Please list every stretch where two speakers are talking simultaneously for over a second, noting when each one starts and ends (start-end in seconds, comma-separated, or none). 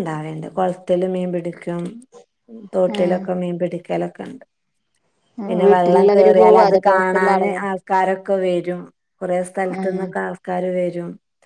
5.6-7.6